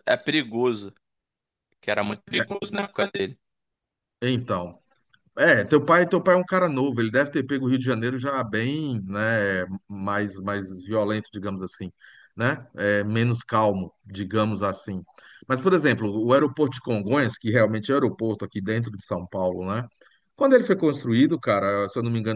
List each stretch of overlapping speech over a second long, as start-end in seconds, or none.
none